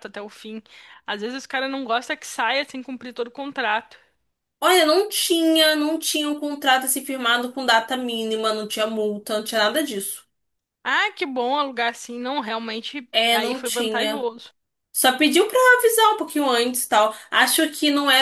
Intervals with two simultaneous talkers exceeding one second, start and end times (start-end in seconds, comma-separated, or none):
13.1-14.3